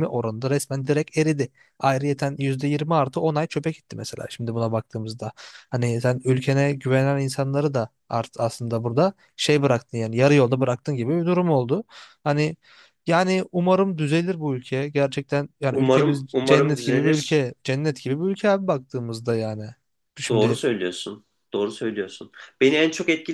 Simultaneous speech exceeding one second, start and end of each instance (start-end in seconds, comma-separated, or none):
15.7-17.4